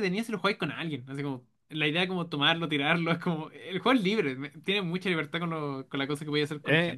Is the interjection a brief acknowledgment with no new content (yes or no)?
no